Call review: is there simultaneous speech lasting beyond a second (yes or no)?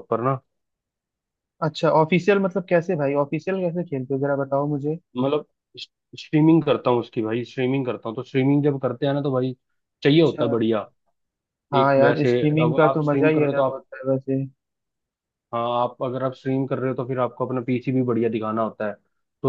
yes